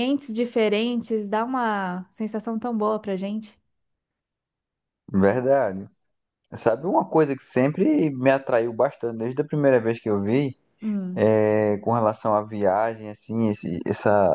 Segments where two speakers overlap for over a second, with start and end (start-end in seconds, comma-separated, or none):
none